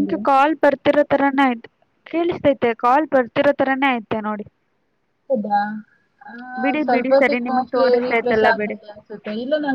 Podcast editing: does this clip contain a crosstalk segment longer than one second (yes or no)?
yes